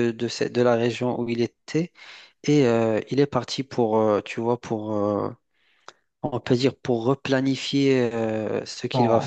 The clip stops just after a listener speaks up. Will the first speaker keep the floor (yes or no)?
no